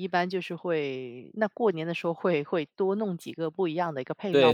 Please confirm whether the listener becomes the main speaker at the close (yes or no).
yes